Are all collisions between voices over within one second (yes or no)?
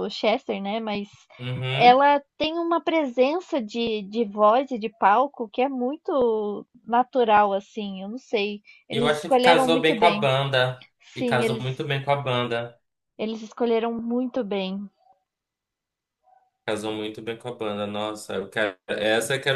no